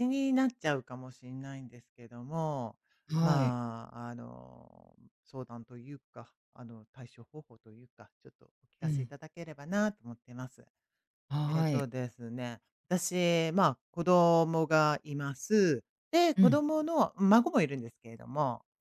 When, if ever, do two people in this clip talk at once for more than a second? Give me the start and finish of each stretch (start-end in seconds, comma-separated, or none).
none